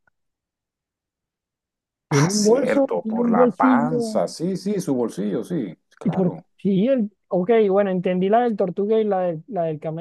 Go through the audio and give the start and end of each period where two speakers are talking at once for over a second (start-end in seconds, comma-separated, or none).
2.1-4.2